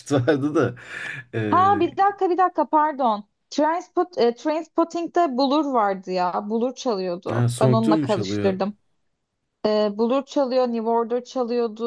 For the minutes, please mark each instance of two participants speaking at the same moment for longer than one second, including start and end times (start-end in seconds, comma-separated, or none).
7.3-8.6